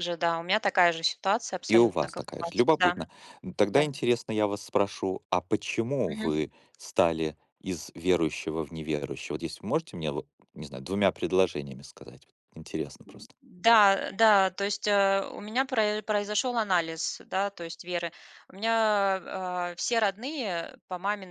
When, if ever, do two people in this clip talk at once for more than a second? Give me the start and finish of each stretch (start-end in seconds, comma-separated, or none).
1.7-3.0